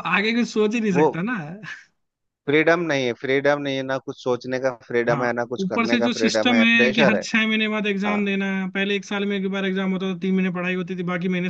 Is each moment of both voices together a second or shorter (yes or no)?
no